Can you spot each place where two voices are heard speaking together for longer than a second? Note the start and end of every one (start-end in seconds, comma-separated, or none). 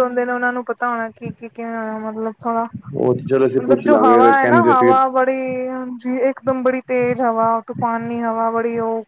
3.0-4.9